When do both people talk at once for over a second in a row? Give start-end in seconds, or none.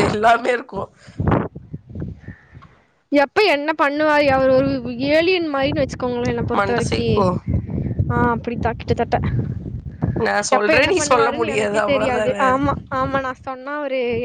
10.6-12.4